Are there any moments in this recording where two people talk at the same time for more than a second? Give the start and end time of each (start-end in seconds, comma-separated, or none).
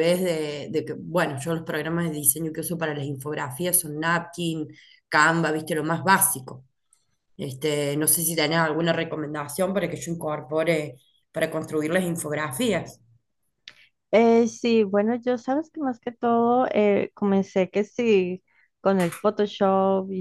none